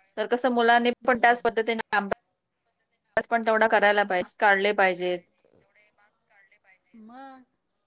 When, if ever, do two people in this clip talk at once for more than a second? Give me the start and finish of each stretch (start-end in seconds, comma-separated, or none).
none